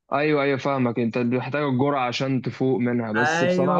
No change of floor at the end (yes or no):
no